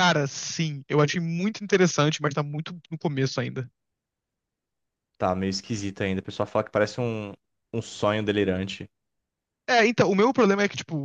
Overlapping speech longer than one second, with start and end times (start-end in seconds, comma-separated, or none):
none